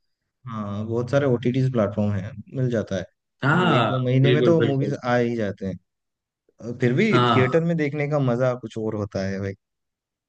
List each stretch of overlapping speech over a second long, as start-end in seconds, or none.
3.5-5.0